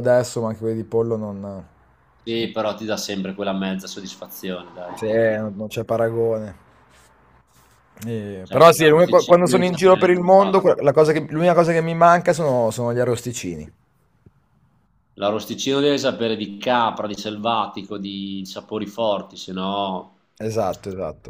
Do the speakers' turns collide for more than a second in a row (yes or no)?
yes